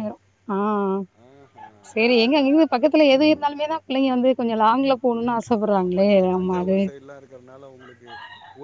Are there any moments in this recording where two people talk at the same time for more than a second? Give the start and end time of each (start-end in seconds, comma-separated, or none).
none